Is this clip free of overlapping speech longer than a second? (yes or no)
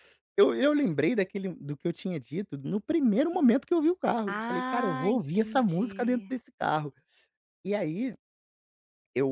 no